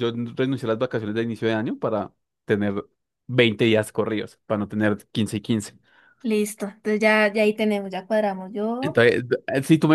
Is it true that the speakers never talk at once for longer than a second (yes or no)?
yes